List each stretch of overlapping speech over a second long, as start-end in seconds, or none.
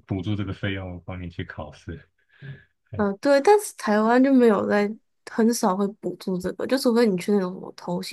none